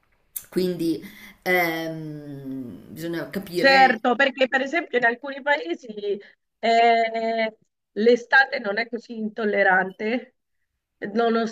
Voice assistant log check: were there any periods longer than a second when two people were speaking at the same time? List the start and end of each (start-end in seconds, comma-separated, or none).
none